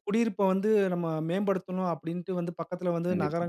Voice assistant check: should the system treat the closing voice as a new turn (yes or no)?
no